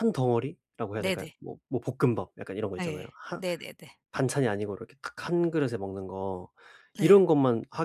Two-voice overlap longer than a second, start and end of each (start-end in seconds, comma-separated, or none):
none